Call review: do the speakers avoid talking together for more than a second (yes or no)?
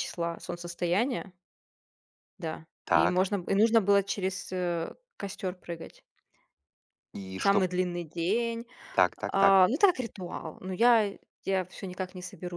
yes